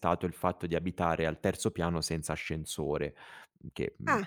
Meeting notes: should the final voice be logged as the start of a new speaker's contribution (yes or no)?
no